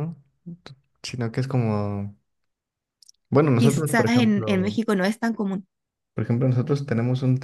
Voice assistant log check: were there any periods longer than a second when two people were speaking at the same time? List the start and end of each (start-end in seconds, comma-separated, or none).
3.6-4.8